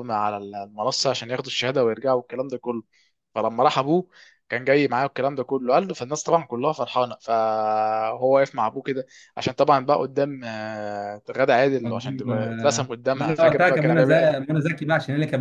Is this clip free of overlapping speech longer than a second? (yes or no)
no